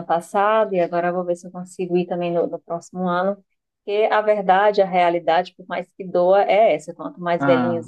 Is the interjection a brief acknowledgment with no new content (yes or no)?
yes